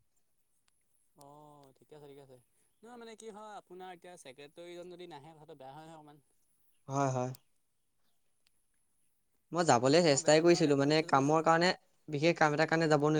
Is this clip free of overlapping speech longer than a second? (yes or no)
no